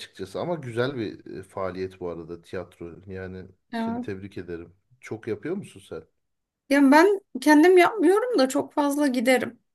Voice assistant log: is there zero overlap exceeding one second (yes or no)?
yes